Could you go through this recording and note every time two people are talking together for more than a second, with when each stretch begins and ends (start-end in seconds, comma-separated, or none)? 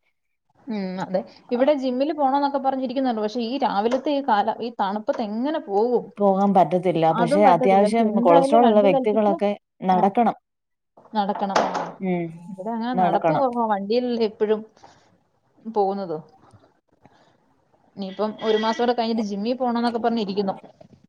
7.2-9.3